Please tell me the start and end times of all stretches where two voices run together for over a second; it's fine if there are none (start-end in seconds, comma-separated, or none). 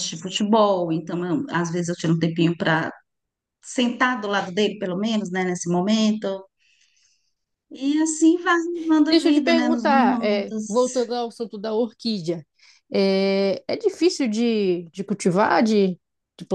9.1-11.1